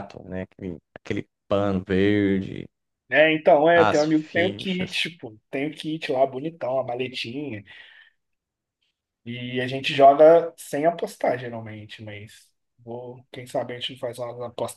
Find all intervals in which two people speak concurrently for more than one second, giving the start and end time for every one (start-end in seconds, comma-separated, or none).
3.7-5.0